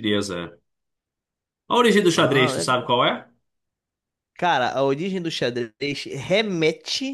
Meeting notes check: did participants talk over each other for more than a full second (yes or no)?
no